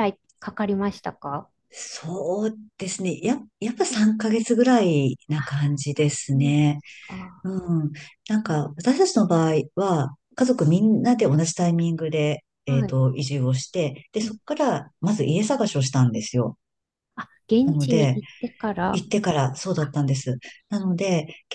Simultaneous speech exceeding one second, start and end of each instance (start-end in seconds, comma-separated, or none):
5.4-6.8